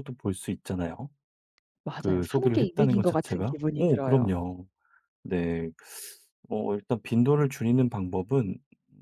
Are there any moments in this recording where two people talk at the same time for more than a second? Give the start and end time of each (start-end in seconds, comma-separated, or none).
2.0-4.3